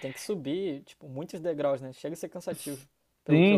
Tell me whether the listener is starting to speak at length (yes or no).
yes